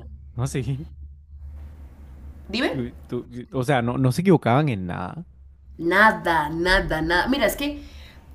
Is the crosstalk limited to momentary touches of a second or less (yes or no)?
yes